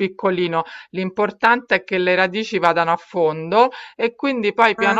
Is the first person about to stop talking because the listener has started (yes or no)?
no